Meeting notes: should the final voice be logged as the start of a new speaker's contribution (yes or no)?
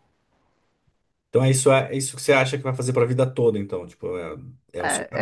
yes